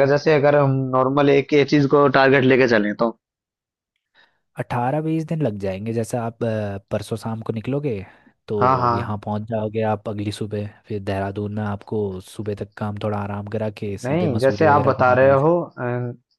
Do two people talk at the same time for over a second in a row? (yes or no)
yes